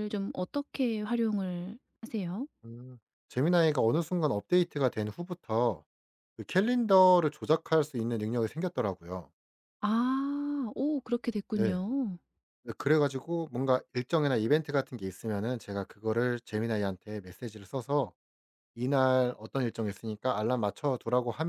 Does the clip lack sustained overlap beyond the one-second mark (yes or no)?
yes